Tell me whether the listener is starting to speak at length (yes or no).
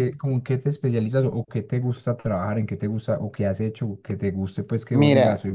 yes